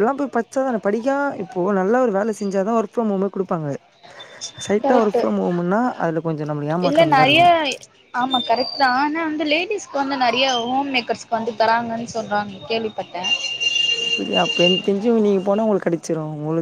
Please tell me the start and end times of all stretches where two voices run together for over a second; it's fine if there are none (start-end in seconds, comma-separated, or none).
none